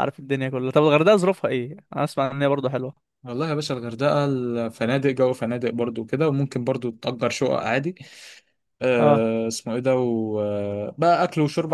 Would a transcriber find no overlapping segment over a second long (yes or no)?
yes